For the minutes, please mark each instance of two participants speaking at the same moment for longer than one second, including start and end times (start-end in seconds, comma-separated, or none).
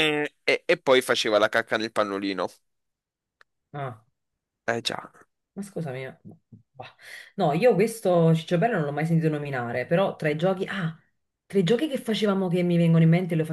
none